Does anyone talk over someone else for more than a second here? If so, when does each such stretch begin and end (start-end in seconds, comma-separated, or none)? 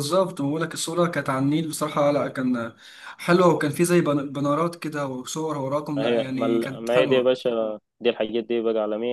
6.0-7.3